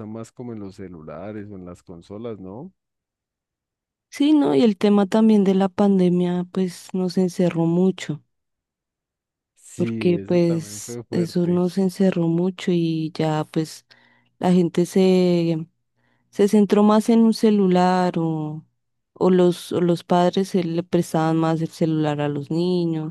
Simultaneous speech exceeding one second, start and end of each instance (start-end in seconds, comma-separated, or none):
9.8-11.6